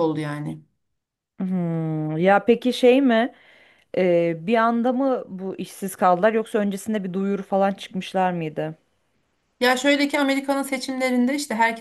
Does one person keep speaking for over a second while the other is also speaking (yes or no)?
no